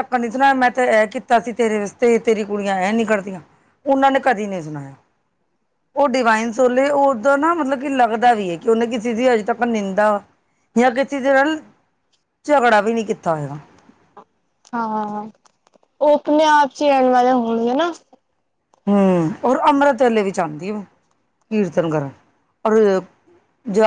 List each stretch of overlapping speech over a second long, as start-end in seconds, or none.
none